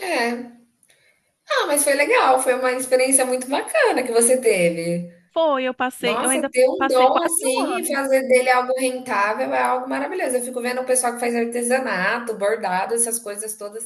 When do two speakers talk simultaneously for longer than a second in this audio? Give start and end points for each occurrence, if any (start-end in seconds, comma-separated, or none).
6.0-8.0